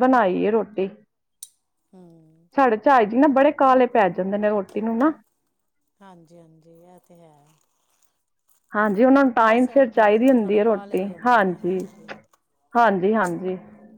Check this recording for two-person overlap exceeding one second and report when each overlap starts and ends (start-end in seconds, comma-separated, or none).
9.4-11.6